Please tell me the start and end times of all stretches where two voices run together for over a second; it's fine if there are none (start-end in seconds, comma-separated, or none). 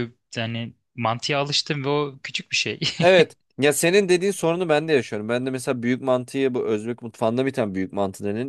none